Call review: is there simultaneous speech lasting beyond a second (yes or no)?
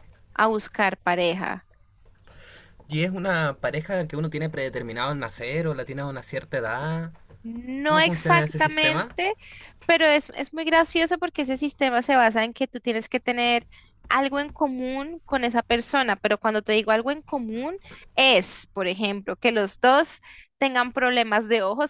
yes